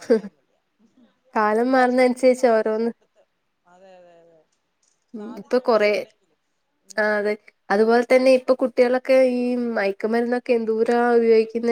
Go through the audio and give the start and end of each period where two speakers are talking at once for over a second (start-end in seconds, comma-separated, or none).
1.4-2.9